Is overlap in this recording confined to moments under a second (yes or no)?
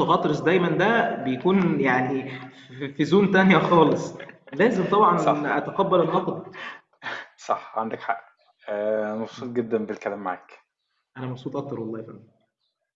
yes